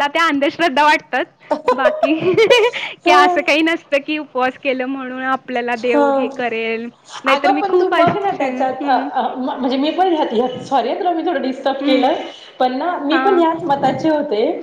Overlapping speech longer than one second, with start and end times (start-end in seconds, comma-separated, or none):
7.3-8.9